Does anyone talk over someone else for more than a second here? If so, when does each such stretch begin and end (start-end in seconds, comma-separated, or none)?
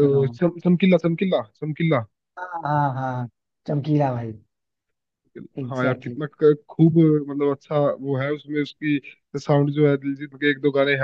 none